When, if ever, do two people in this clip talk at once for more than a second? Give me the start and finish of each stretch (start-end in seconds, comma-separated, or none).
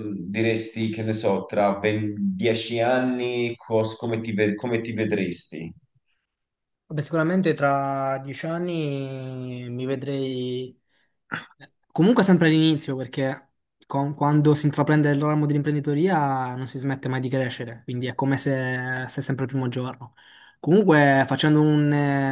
none